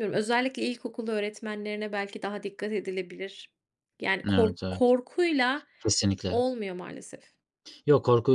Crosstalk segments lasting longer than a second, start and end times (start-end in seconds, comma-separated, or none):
none